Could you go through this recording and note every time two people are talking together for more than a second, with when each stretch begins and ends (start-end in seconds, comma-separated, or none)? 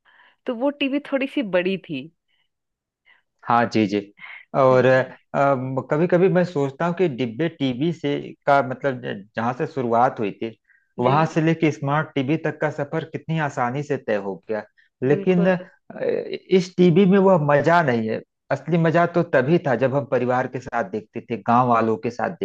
none